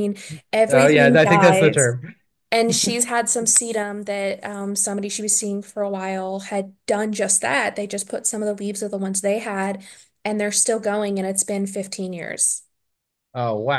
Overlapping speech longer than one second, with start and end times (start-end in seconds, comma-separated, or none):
0.7-1.9